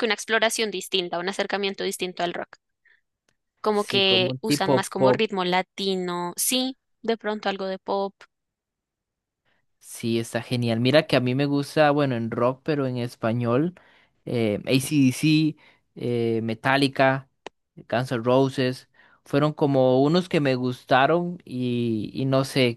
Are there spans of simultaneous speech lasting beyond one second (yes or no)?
yes